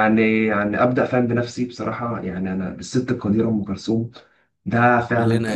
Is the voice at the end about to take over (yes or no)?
no